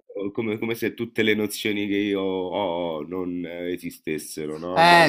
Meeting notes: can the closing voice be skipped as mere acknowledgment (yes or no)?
no